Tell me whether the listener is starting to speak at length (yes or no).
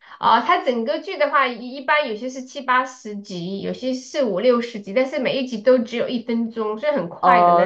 yes